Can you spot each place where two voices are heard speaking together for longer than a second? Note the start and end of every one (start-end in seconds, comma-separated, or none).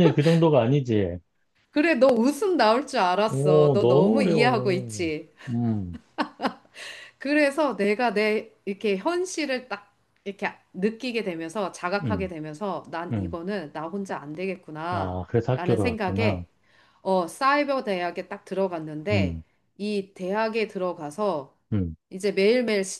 3.3-5.1, 14.9-16.4